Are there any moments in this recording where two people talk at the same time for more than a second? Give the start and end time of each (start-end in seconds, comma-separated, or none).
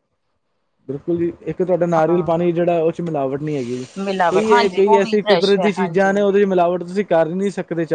4.3-6.1